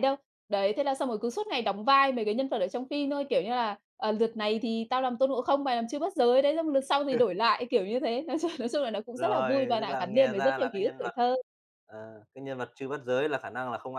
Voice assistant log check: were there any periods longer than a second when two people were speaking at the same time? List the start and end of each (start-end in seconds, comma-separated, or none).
9.1-11.1